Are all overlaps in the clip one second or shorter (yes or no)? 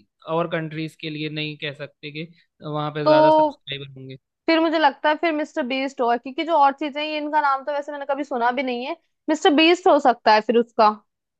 yes